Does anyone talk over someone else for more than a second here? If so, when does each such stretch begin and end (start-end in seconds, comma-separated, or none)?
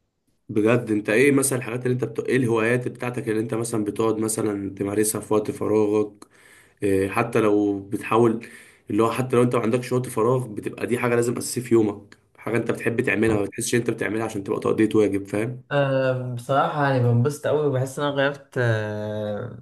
none